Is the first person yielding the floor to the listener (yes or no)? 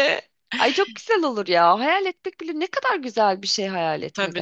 yes